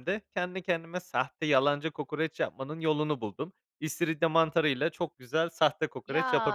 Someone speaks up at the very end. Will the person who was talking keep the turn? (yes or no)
no